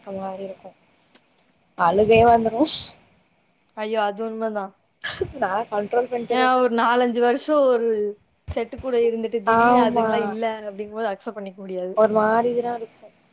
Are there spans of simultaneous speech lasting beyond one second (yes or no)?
no